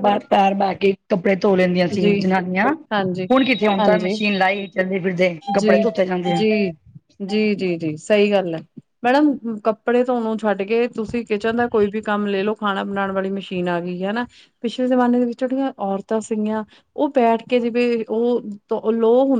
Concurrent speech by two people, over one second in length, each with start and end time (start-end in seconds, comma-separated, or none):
none